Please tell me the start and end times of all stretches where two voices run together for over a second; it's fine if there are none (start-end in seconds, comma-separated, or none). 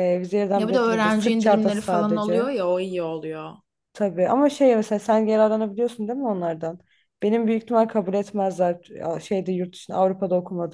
0.6-2.5